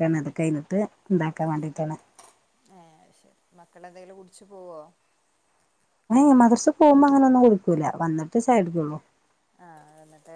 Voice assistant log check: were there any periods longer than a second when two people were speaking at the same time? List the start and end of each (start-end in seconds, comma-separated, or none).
none